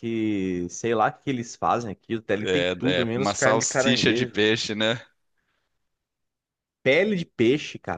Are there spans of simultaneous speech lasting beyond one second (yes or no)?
yes